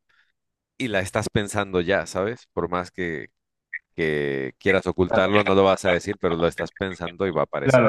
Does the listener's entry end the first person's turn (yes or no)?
yes